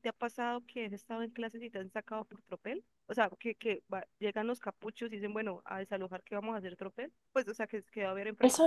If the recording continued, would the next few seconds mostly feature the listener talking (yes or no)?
yes